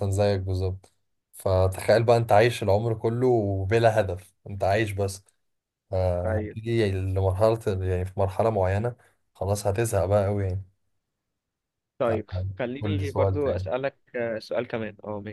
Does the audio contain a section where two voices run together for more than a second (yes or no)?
yes